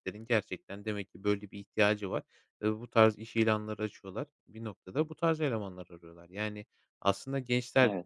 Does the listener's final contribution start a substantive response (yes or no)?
no